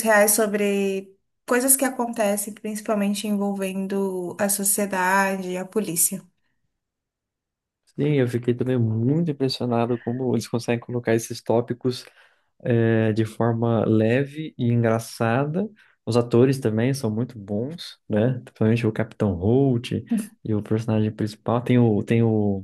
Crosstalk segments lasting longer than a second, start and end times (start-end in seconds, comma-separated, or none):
none